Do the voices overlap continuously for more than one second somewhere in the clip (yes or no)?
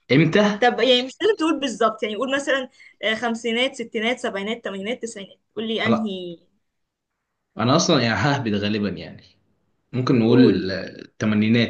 no